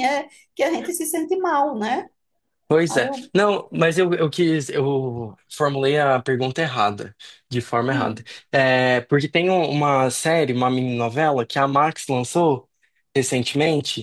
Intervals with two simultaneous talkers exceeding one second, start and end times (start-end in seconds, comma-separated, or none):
none